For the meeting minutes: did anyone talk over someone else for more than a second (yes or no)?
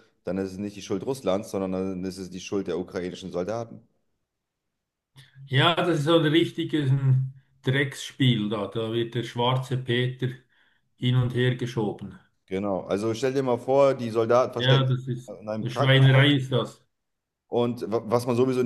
yes